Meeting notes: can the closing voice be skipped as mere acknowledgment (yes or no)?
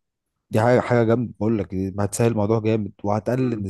yes